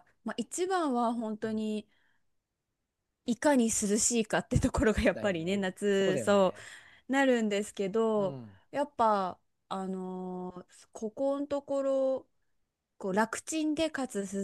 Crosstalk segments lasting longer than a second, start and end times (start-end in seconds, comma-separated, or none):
5.1-6.5